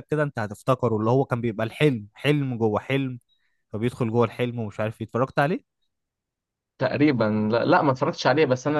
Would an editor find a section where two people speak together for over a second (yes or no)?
no